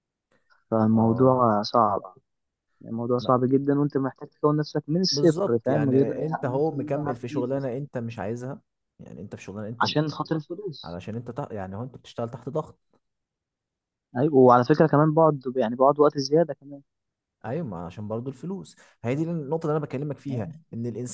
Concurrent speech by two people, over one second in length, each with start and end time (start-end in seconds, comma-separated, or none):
5.1-7.5